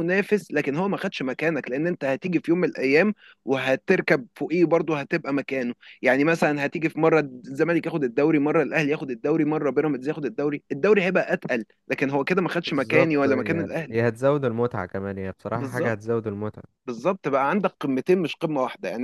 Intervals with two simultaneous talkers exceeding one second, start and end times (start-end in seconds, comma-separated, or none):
12.7-14.0